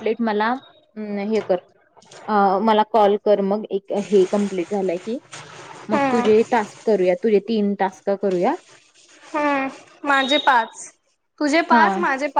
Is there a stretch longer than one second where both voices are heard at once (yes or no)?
no